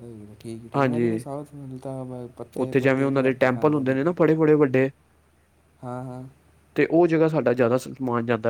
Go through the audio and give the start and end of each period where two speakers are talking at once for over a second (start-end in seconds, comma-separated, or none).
2.6-4.0